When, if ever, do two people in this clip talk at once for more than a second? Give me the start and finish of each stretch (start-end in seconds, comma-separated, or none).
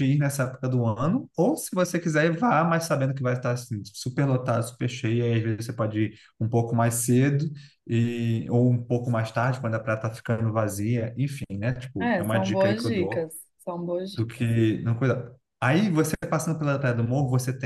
12.0-13.3